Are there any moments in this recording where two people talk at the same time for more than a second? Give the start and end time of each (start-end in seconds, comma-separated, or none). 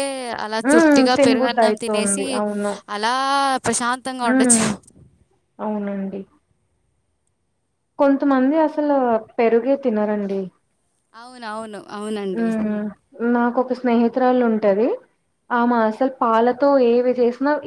0.7-2.2